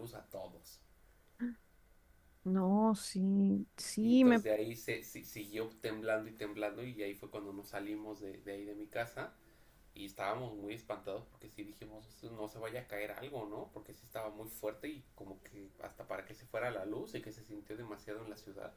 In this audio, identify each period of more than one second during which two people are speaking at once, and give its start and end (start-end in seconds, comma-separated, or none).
none